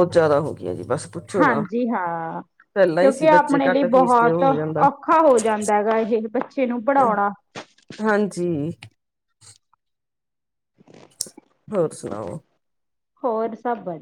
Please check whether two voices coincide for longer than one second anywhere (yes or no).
yes